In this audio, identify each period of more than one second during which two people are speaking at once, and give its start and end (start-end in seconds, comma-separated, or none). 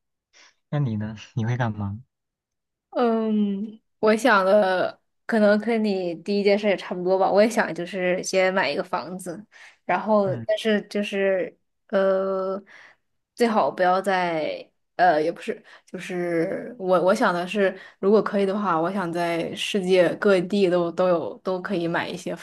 none